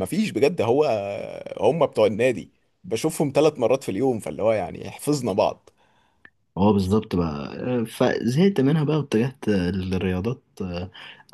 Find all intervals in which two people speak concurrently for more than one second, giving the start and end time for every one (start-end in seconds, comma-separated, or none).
none